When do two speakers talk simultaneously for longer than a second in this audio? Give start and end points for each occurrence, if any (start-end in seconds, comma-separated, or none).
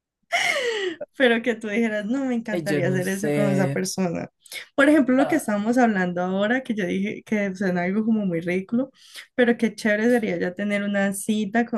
2.5-3.8